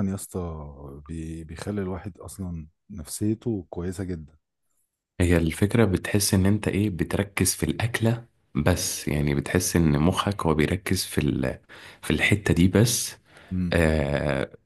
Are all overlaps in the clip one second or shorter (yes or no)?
yes